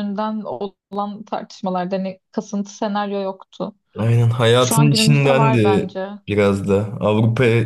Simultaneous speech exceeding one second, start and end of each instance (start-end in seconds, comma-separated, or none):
4.6-5.9